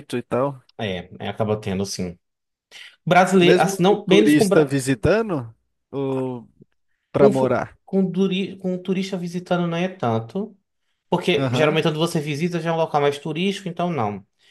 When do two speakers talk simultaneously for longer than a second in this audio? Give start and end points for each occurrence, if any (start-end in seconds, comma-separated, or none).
3.4-4.8